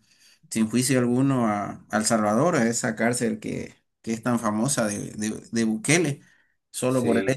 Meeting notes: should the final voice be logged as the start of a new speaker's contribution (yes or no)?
no